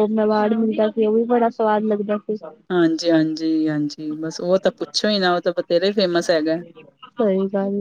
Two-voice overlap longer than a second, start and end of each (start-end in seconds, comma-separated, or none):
none